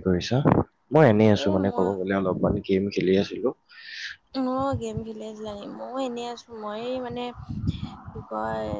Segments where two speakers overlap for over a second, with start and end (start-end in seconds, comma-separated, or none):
none